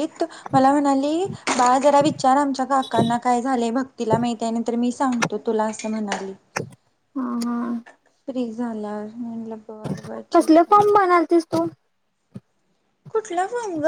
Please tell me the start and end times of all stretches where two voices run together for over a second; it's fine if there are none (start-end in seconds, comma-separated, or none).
none